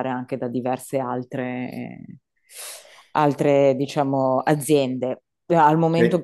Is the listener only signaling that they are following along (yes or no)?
yes